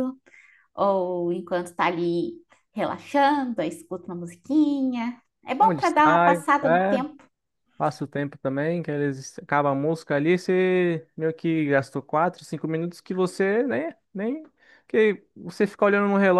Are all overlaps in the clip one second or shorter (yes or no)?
no